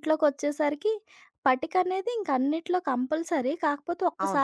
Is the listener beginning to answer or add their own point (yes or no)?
no